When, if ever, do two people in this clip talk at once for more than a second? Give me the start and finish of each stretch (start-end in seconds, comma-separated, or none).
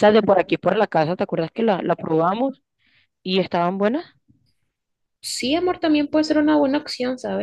none